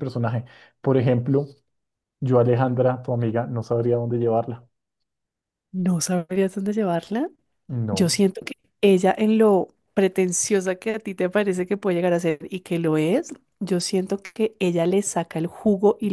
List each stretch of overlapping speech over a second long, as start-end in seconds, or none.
none